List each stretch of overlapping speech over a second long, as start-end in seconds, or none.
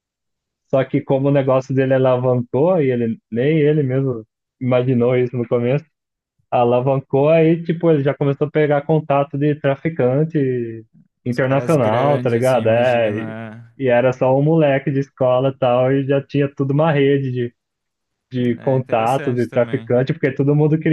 11.3-13.4, 18.6-19.9